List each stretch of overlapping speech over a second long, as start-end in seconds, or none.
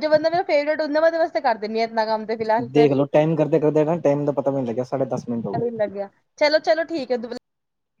none